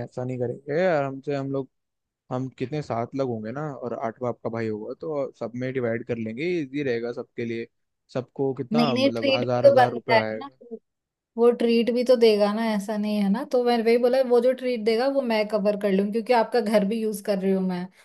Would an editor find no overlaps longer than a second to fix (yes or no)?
no